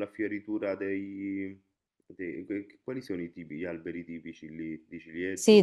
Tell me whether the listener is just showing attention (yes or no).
no